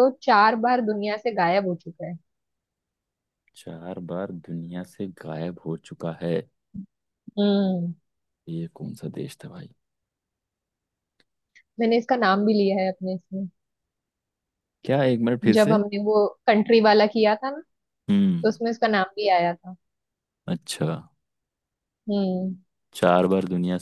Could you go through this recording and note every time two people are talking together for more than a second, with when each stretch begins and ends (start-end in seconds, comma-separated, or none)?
none